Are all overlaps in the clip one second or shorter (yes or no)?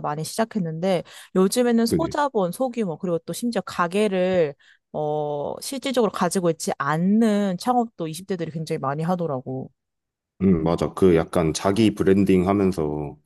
yes